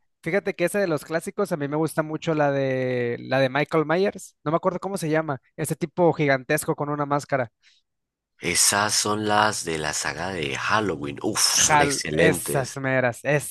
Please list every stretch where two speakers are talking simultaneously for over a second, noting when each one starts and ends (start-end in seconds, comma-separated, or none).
11.5-12.8